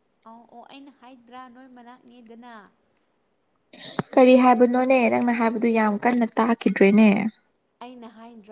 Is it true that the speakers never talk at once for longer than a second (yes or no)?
yes